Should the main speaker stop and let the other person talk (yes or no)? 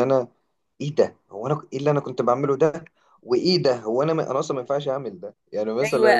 yes